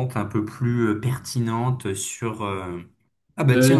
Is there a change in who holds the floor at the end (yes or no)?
no